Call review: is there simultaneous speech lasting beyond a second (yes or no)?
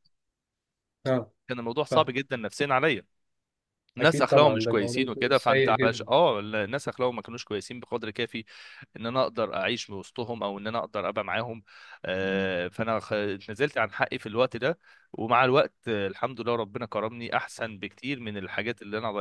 yes